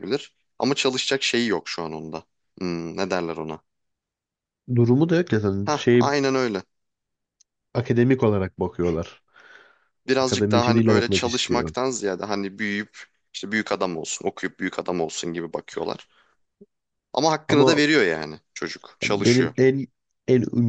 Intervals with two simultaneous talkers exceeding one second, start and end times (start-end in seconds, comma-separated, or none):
10.2-11.7